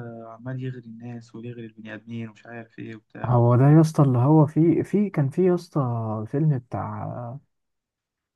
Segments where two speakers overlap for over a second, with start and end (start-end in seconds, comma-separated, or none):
none